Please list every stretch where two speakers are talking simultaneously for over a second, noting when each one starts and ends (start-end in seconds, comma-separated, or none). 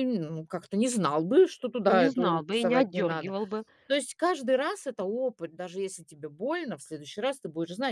2.0-3.3